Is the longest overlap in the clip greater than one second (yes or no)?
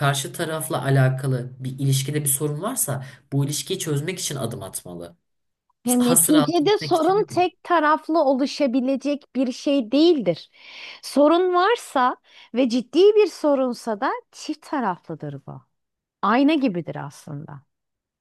yes